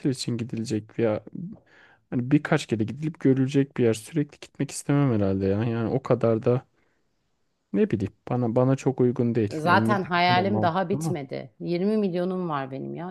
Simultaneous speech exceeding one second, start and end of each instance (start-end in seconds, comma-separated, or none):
9.5-11.1